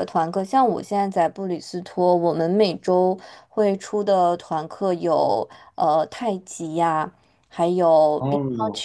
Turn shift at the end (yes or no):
no